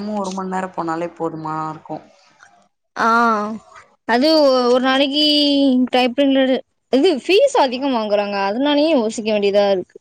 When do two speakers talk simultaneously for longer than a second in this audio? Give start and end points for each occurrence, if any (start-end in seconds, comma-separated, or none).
none